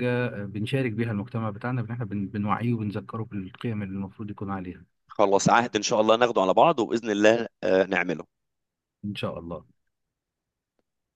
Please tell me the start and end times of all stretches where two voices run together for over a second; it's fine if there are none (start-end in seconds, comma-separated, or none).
none